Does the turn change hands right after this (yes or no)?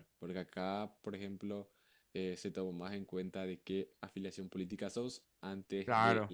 no